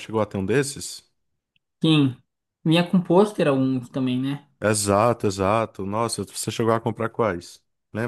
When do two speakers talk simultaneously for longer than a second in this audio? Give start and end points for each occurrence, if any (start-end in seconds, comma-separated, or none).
none